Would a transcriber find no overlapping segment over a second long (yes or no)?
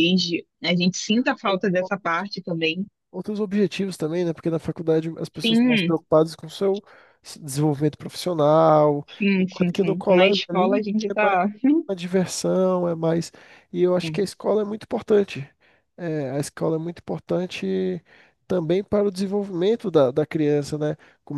no